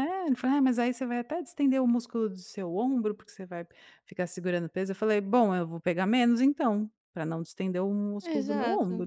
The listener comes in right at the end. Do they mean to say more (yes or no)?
yes